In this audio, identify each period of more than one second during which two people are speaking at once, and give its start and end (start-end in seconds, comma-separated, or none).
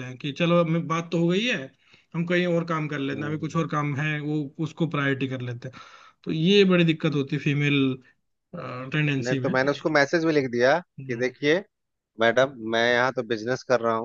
none